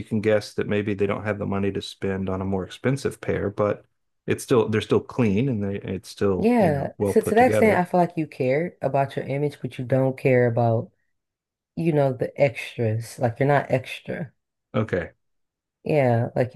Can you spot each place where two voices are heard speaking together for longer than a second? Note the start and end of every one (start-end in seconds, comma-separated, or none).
6.4-7.8